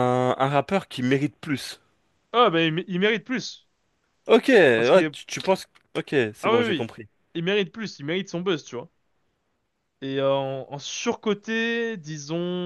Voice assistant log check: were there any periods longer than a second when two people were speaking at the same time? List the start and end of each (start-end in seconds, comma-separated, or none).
none